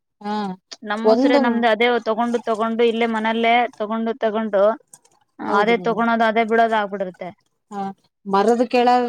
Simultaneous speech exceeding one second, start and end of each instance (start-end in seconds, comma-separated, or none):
none